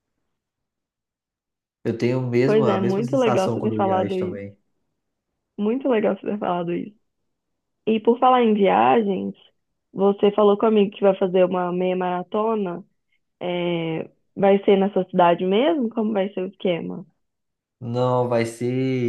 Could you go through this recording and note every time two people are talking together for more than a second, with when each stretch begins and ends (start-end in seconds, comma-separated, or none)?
2.5-4.4